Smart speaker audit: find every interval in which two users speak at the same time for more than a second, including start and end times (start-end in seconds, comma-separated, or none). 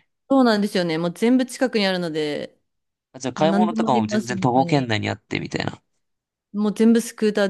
3.4-4.9